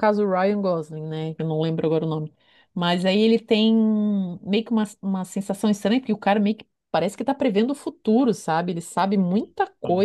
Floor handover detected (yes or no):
no